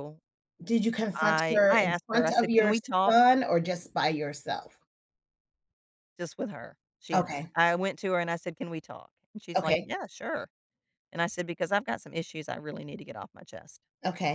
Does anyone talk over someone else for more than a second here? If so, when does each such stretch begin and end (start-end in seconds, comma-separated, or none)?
1.1-3.1